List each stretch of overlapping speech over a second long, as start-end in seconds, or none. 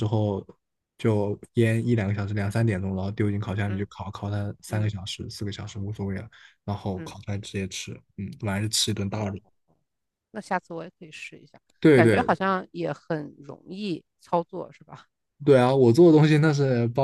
none